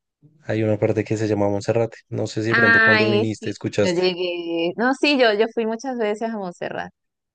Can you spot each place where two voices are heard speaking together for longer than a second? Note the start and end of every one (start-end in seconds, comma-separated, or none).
2.5-4.0